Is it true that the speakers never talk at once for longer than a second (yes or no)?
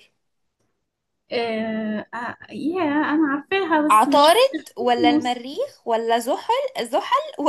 no